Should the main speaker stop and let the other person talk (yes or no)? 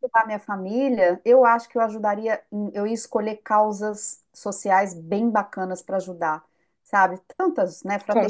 no